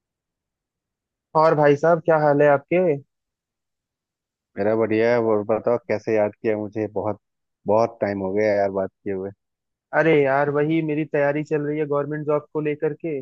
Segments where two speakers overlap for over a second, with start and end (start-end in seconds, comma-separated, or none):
none